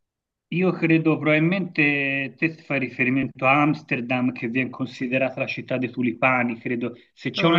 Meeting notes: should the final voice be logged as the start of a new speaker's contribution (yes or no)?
no